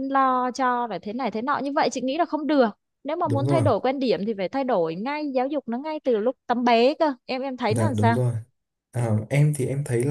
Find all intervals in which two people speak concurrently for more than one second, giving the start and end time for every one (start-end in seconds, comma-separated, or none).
none